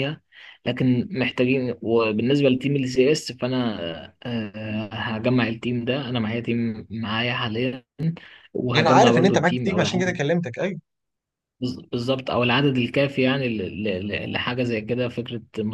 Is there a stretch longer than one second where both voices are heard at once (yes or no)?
yes